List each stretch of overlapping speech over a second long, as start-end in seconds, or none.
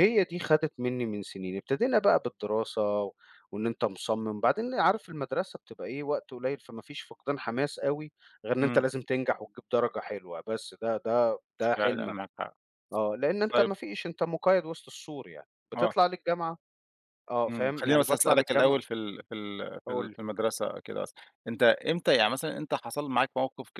17.5-18.8